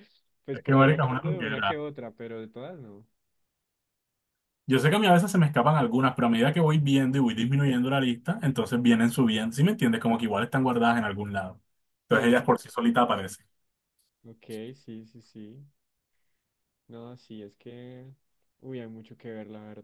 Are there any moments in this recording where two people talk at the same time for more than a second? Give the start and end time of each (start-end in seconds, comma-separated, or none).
0.5-1.8